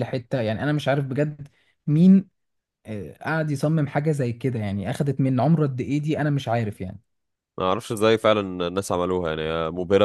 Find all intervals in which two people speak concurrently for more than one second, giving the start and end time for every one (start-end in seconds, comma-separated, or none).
none